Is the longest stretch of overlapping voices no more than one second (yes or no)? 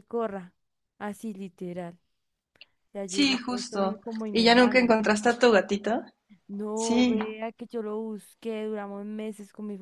no